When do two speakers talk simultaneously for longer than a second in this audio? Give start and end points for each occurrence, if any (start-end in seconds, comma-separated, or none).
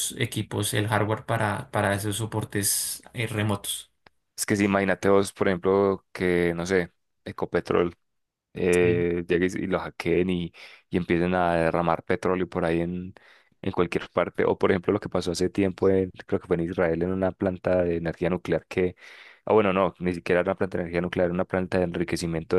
none